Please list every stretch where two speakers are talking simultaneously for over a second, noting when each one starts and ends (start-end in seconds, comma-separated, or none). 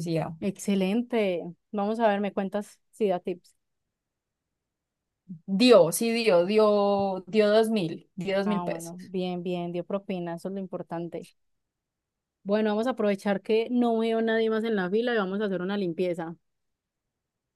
none